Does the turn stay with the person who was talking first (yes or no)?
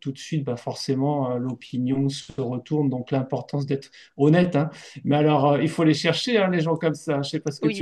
no